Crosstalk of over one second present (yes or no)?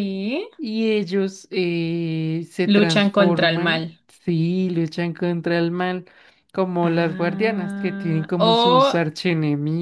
yes